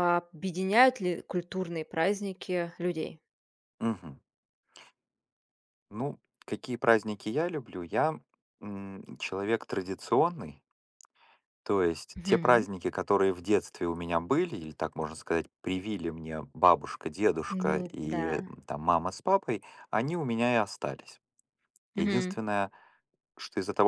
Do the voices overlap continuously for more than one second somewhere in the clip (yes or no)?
no